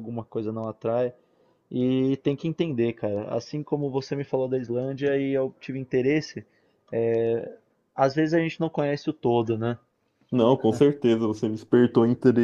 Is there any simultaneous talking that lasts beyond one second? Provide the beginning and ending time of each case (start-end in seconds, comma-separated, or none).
none